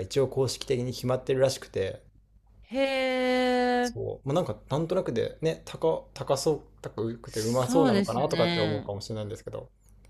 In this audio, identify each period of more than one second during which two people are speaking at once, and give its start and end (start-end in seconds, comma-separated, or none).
7.2-8.9